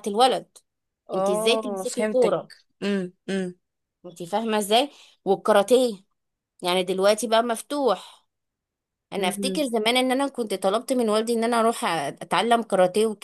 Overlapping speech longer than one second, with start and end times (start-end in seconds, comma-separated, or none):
1.1-2.4